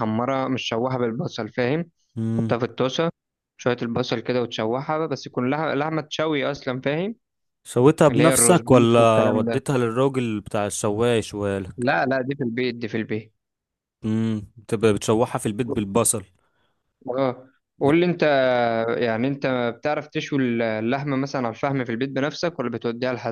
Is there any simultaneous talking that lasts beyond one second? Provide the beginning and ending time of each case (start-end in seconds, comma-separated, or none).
8.1-9.6